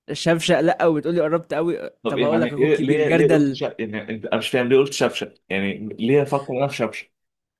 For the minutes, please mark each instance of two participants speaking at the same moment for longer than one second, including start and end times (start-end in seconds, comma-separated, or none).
2.0-3.6